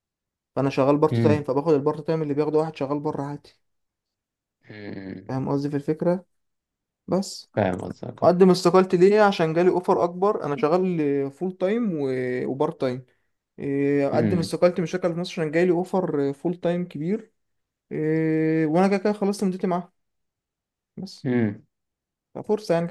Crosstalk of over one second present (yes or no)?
no